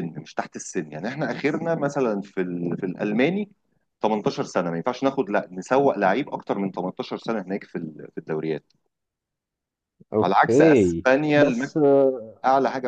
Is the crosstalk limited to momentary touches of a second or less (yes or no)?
no